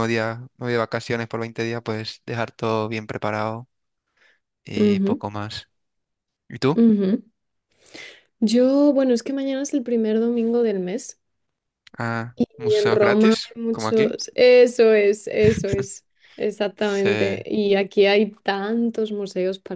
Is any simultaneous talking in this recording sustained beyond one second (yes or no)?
yes